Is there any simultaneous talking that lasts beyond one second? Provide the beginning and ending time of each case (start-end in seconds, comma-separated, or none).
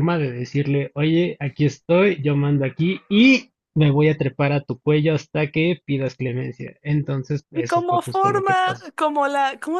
7.5-8.9